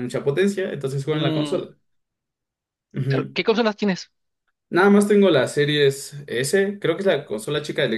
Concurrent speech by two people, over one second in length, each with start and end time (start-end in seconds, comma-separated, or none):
none